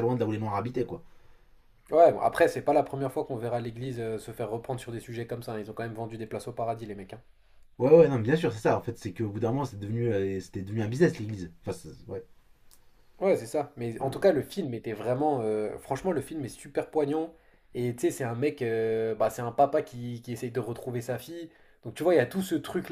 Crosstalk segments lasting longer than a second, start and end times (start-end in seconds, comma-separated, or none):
none